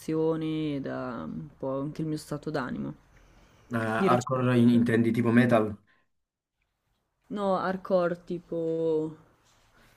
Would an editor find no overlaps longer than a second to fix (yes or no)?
yes